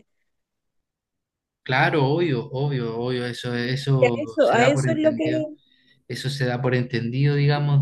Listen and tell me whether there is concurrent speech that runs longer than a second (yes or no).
yes